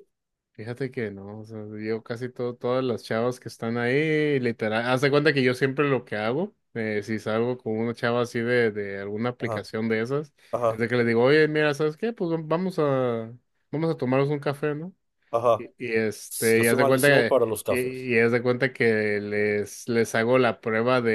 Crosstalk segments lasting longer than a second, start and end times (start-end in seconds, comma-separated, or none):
16.6-18.1